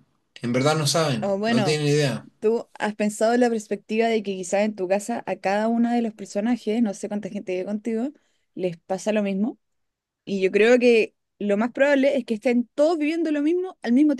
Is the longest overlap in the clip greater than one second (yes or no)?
no